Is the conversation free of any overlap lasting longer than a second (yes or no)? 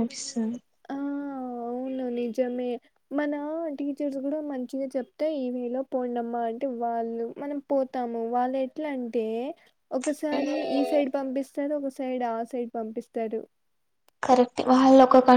yes